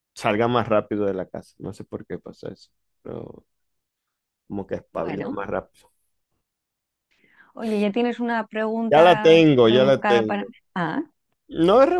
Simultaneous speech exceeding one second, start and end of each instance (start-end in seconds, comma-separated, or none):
8.9-10.5